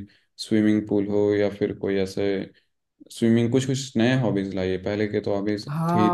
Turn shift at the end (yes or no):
yes